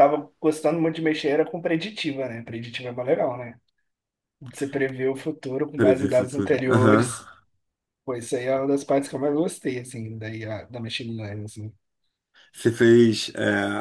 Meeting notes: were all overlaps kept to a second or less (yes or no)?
no